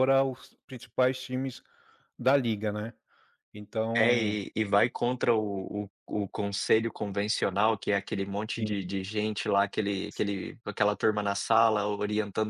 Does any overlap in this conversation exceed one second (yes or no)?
no